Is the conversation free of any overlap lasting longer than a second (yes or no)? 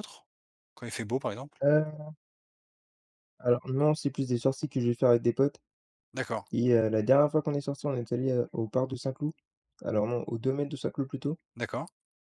yes